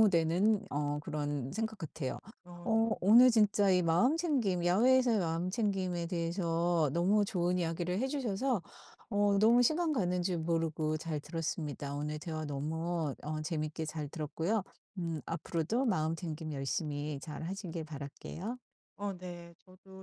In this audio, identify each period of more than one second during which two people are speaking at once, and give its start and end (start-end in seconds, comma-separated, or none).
none